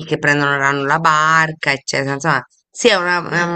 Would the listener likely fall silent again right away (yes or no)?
yes